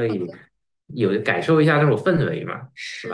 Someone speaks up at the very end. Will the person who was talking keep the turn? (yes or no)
no